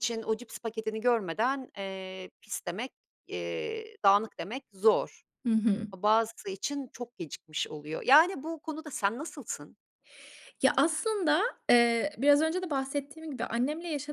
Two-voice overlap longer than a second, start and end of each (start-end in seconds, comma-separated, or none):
none